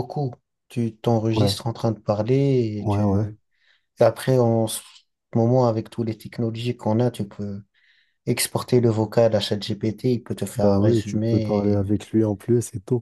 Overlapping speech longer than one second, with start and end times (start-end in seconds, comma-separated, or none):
10.6-11.9